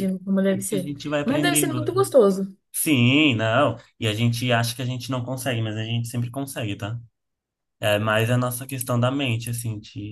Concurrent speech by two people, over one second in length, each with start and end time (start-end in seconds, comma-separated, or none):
0.5-1.9